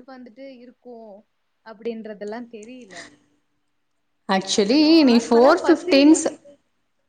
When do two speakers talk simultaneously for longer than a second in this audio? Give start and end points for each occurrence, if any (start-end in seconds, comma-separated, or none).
4.4-6.2